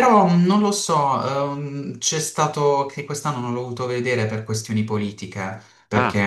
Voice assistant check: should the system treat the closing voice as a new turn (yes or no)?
no